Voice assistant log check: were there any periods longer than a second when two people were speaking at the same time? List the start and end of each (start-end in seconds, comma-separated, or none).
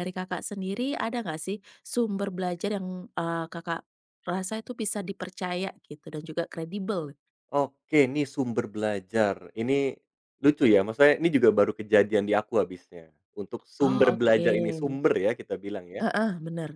13.8-15.0